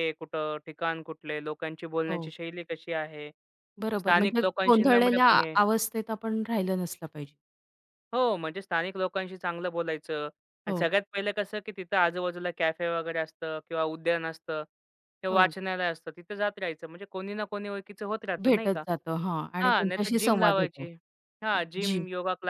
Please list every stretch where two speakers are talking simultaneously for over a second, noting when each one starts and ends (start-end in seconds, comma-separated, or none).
4.0-5.3, 19.6-20.9